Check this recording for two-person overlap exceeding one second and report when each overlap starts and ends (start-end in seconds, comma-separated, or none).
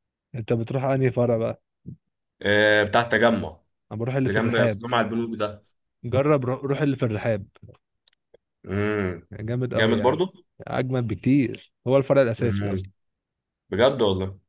none